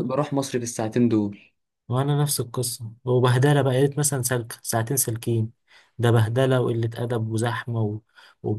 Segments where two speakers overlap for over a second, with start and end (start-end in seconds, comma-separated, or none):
none